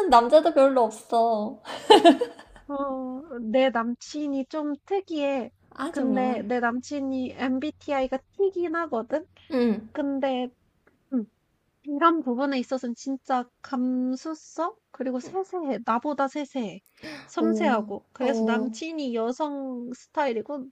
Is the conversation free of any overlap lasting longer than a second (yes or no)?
no